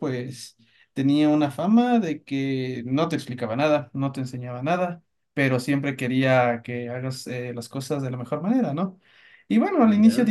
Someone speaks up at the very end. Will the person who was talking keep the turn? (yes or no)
yes